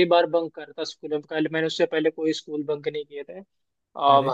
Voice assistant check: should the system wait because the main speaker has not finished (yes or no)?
yes